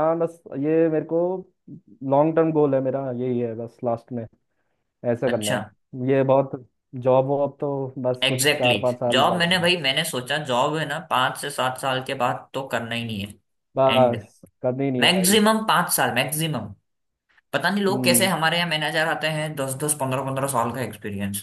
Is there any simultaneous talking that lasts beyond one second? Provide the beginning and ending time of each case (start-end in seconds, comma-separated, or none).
8.2-9.7